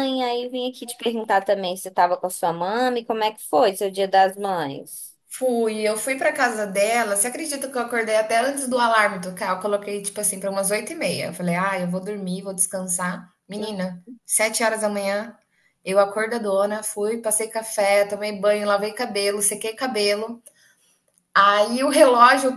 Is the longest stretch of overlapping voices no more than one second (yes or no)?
yes